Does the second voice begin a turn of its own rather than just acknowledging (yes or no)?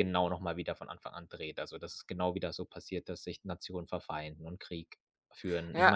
yes